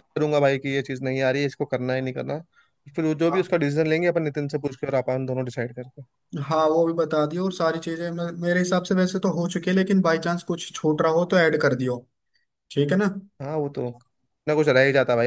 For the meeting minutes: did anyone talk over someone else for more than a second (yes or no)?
no